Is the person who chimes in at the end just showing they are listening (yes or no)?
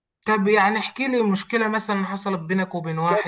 no